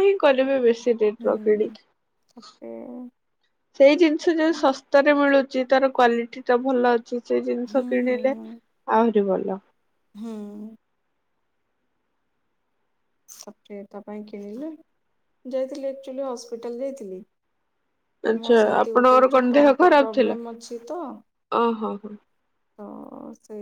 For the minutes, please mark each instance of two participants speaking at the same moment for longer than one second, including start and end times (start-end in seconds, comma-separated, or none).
18.4-20.4